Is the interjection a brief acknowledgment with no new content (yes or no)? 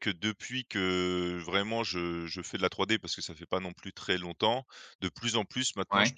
yes